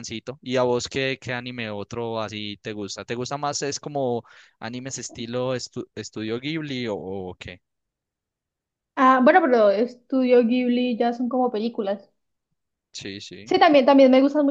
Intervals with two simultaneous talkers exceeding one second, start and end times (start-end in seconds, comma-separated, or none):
none